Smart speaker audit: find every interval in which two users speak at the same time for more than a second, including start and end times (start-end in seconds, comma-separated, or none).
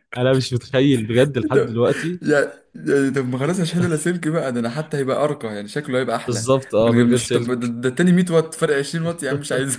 6.3-7.7